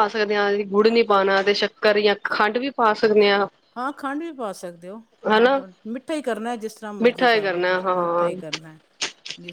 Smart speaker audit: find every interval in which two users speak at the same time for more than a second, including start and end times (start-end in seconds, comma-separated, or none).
7.0-8.3